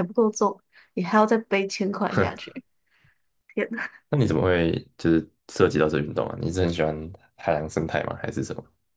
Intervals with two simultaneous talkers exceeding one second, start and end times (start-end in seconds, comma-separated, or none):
none